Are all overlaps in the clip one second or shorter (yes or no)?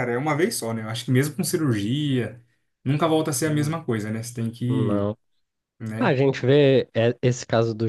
yes